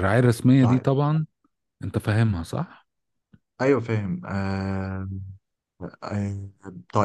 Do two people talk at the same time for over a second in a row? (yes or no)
no